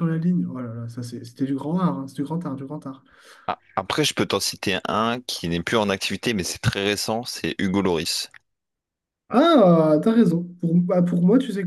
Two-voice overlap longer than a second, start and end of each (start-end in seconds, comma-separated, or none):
none